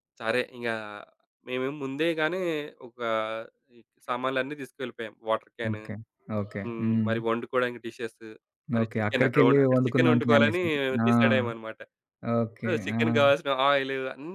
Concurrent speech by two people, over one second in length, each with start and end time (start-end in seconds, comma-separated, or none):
8.8-10.6